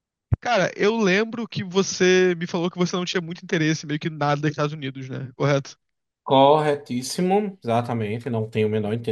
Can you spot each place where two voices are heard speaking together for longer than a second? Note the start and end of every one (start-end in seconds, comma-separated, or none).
none